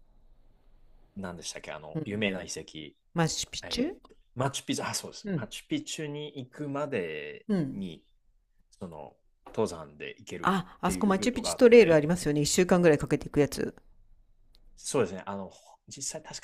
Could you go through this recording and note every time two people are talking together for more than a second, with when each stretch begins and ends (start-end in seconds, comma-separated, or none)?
10.4-12.1